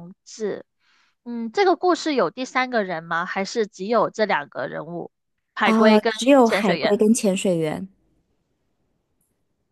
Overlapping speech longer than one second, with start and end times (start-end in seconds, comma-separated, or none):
5.6-7.0